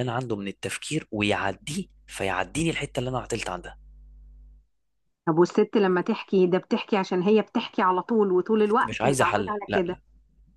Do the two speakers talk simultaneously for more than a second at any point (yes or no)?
yes